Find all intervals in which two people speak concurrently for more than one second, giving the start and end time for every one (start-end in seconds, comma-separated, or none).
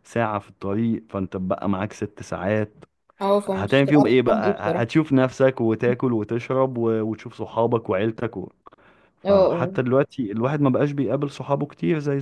3.4-4.9